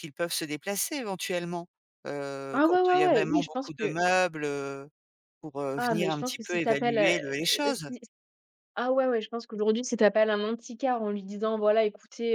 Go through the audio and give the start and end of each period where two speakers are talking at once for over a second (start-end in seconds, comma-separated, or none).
2.5-4.0, 5.8-7.9